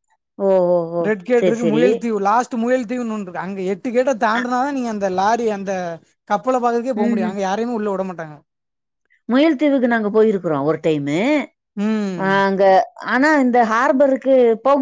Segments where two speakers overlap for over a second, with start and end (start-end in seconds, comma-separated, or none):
none